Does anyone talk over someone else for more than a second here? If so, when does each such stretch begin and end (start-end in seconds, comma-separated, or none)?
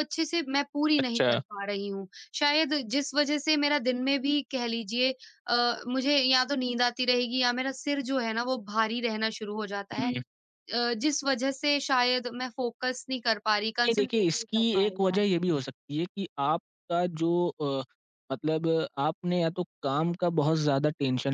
13.8-15.4